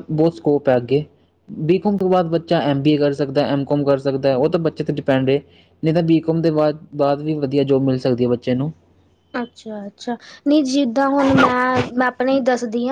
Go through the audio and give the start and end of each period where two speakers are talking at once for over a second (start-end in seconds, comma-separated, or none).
none